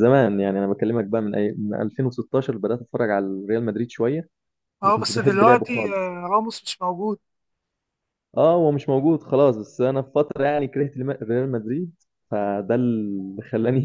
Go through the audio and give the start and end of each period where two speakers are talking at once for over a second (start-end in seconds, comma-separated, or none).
4.8-6.1